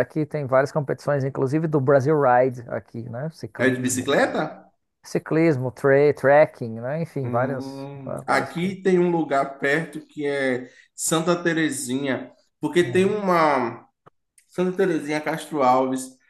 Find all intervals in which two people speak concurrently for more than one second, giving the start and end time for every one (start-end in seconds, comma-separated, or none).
7.2-8.8